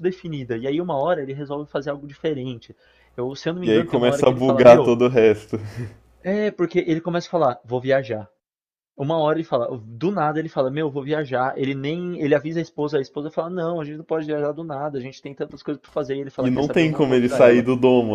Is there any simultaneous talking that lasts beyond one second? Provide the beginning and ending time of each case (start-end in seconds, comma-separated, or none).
3.6-5.0, 16.4-17.6